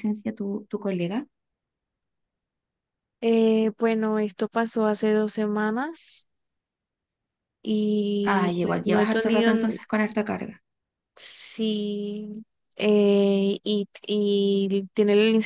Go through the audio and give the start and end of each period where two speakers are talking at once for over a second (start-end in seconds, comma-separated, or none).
8.2-9.8